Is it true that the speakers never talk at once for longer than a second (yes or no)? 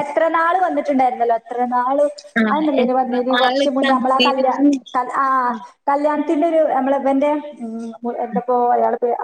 no